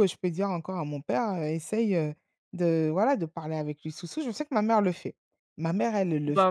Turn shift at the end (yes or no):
no